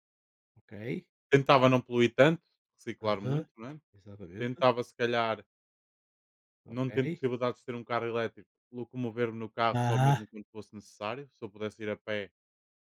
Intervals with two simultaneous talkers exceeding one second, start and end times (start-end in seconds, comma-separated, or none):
none